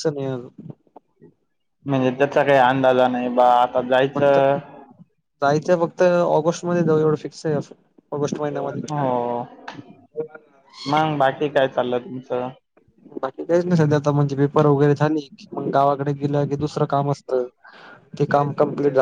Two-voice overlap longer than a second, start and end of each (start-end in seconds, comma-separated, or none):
none